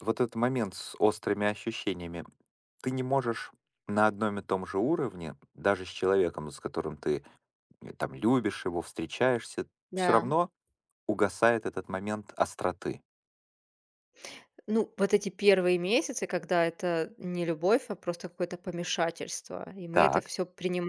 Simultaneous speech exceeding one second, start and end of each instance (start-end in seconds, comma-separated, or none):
none